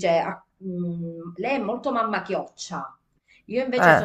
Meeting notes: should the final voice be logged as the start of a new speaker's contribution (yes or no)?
no